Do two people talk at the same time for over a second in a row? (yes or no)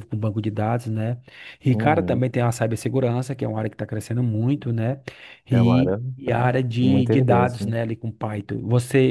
yes